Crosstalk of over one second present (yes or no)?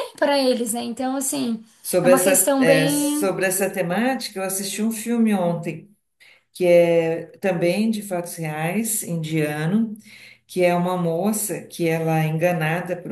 yes